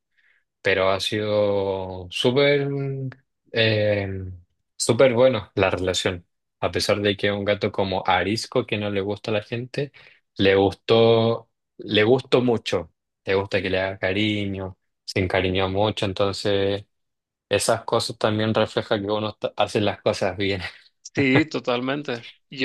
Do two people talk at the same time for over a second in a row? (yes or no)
no